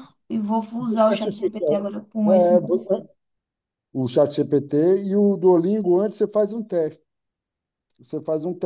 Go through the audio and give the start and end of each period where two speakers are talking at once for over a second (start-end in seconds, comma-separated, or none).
0.8-2.6